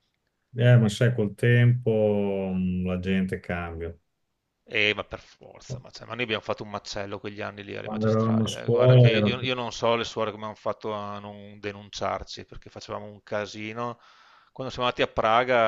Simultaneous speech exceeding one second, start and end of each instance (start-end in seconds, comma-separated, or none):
7.8-9.5